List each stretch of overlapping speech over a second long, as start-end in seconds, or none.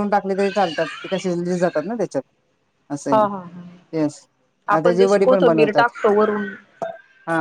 4.8-6.4